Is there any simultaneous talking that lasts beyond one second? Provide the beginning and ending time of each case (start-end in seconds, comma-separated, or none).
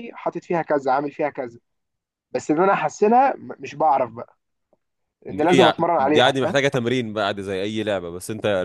5.3-6.6